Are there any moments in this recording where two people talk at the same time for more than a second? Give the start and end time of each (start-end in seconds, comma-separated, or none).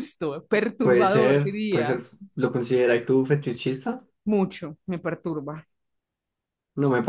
0.8-2.0